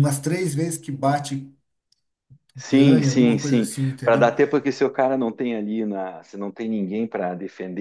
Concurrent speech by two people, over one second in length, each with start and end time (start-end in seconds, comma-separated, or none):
2.7-4.3